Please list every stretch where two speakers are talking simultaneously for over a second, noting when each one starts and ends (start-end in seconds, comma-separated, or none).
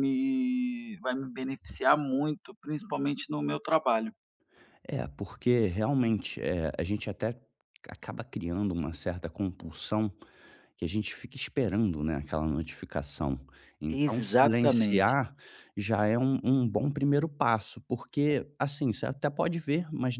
13.9-15.2